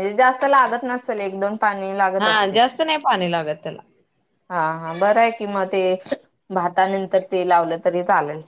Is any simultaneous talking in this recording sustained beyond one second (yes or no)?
no